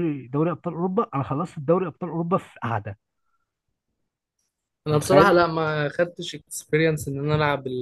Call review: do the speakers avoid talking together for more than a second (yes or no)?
yes